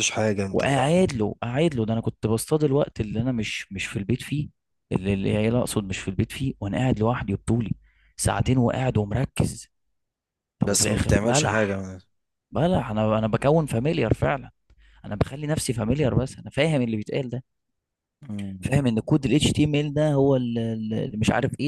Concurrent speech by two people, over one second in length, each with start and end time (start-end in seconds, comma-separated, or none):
10.6-11.8